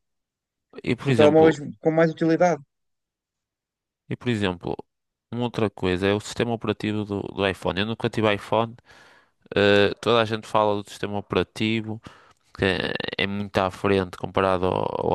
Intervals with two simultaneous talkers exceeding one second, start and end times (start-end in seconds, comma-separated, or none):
none